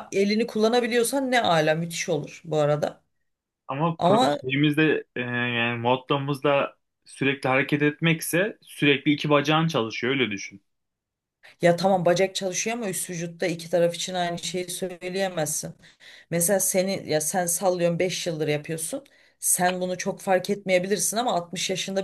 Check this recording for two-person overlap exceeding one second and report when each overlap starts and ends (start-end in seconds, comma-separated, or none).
none